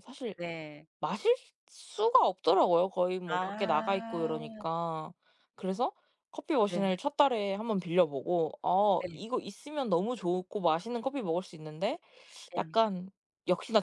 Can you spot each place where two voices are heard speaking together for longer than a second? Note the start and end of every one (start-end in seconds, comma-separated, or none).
3.3-4.6